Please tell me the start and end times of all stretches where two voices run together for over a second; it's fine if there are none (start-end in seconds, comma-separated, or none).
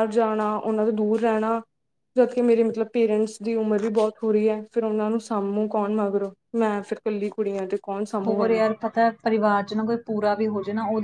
none